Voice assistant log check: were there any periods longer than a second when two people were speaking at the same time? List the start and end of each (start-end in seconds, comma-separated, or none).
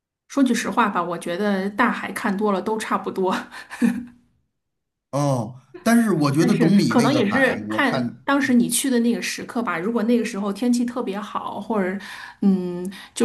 6.4-8.2